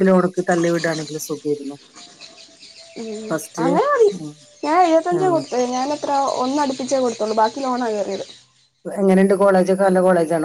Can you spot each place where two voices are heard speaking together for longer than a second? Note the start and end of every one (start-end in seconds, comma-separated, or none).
none